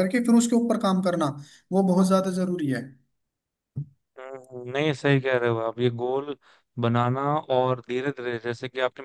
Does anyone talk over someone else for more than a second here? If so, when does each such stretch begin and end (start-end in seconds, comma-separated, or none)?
none